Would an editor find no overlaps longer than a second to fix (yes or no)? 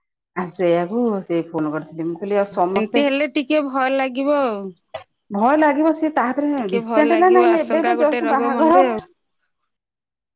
no